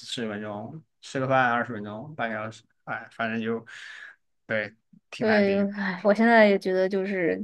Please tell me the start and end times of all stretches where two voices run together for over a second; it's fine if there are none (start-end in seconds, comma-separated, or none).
none